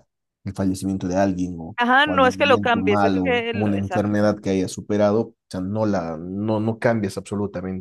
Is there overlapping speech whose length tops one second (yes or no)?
yes